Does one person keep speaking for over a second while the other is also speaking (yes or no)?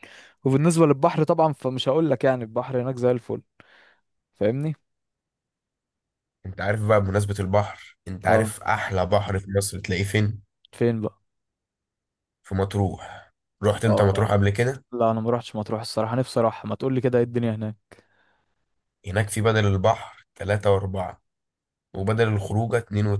no